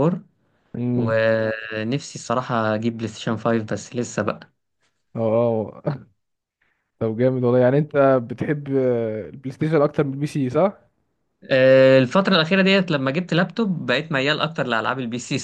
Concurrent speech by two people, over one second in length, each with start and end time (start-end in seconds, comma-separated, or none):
none